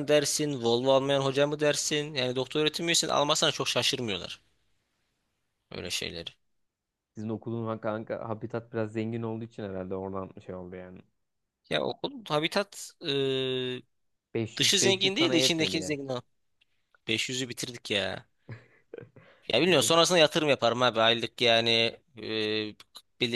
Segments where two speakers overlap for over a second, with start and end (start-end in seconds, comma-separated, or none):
14.6-16.0